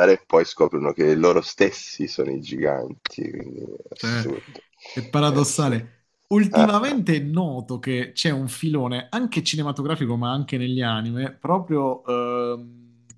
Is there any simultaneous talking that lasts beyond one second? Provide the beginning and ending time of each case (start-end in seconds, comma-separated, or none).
none